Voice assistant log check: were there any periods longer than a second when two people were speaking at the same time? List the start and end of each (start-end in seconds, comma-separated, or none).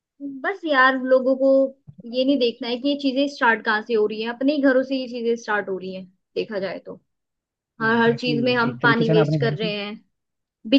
7.8-9.7